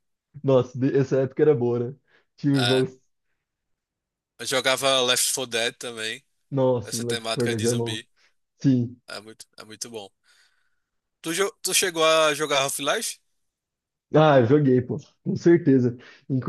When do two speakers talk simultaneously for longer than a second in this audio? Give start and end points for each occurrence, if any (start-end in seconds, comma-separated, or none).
6.8-8.0